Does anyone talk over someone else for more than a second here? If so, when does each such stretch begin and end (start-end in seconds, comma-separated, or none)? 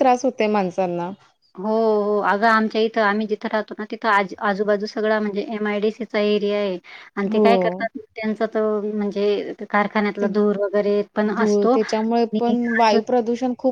11.4-13.0